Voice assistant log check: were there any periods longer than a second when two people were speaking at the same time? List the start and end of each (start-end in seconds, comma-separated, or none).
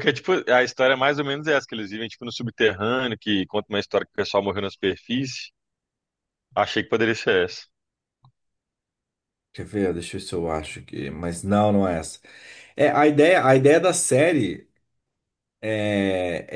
none